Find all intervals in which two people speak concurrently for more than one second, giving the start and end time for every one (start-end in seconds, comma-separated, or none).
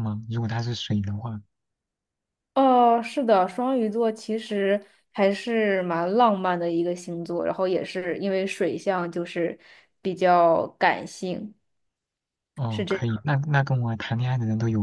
none